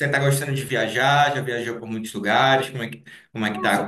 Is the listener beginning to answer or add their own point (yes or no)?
yes